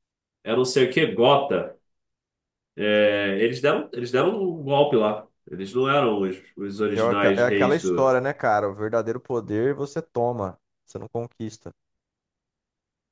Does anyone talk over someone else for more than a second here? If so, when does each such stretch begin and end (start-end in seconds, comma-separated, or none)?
6.9-8.2